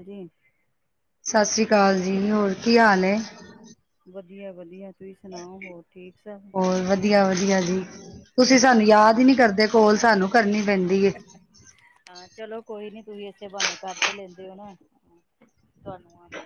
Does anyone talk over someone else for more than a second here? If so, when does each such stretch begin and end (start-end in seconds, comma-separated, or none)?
none